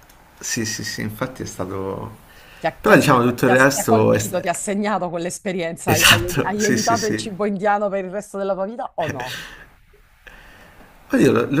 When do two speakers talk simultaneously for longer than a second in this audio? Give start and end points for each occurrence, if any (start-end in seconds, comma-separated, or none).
2.8-4.4, 5.9-7.2